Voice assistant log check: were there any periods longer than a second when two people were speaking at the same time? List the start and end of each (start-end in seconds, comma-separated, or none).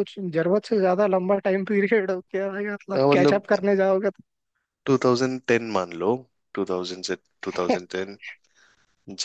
none